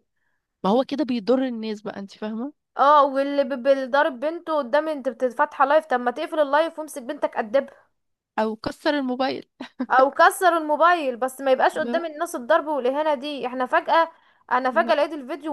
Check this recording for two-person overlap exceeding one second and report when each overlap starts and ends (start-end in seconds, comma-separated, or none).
none